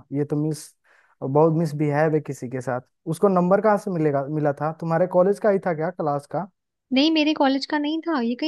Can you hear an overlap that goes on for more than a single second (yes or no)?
no